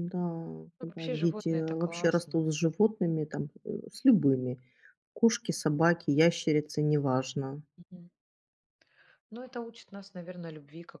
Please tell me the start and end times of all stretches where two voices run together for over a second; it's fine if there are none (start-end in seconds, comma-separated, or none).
0.8-2.4